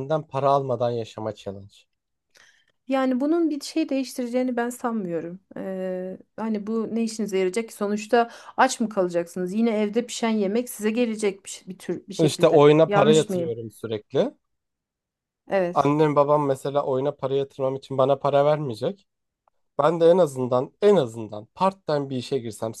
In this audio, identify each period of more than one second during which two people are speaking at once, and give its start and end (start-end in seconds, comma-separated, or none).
12.2-13.5